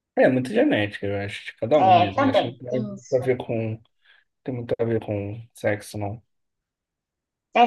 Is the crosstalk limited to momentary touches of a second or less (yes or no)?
no